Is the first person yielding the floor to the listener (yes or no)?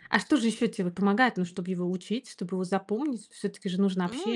yes